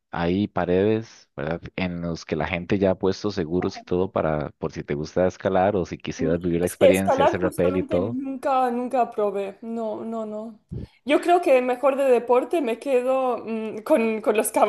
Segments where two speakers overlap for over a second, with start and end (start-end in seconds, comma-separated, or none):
6.2-8.2